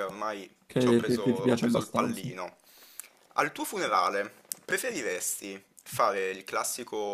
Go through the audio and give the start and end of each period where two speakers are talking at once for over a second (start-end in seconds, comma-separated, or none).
0.7-2.3